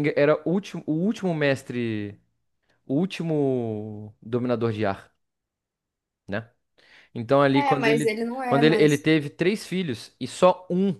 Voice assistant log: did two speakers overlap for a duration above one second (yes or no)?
yes